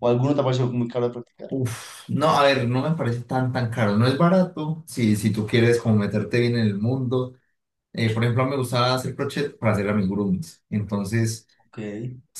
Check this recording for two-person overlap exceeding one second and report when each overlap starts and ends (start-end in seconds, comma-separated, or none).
none